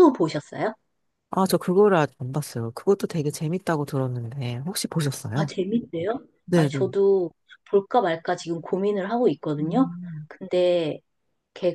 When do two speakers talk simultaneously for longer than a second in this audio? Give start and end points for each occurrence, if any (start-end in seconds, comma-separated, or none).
none